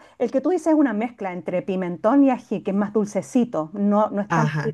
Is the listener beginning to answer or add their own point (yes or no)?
yes